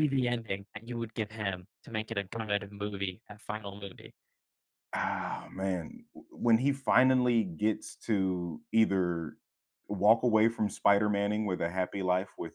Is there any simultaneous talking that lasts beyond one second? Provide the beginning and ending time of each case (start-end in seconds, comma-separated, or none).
none